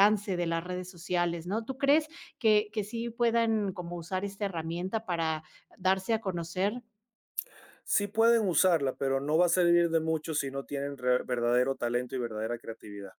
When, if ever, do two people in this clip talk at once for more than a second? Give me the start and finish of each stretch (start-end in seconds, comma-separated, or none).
none